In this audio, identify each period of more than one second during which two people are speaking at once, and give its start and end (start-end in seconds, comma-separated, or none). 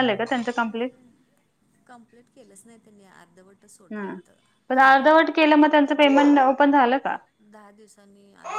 none